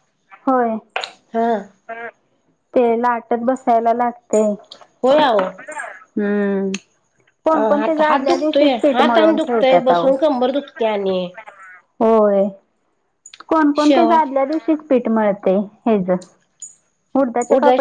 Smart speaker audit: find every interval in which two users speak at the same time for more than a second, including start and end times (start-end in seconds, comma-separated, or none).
7.8-10.1